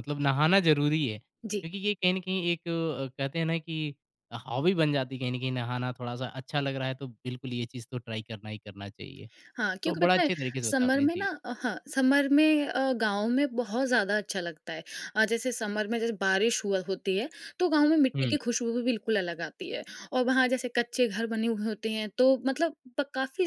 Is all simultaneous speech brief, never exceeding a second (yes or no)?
no